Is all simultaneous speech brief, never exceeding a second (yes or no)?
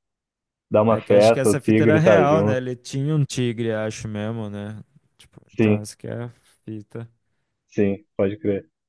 no